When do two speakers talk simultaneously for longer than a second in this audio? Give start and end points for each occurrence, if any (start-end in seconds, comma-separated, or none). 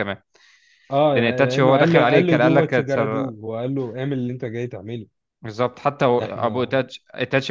1.1-3.3